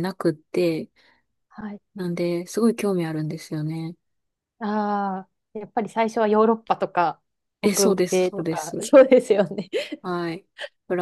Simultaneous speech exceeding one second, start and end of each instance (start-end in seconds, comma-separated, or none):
7.6-8.9